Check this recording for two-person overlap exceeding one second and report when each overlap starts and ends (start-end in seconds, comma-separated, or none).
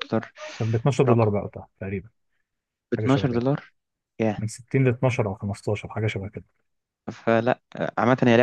none